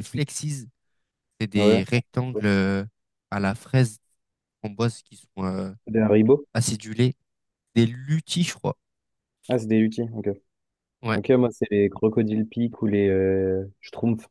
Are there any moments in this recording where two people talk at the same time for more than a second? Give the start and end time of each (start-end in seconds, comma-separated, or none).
none